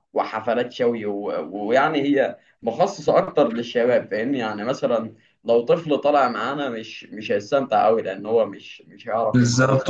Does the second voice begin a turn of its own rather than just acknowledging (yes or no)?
yes